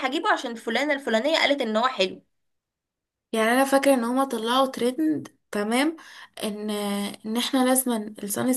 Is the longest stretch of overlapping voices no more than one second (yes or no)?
yes